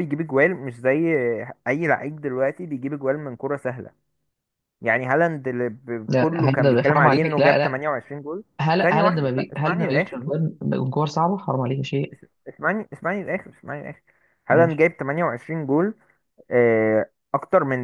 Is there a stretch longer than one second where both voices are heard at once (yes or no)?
yes